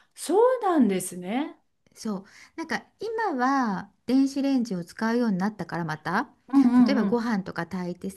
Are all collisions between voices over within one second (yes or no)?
yes